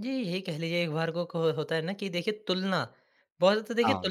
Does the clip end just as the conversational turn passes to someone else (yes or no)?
no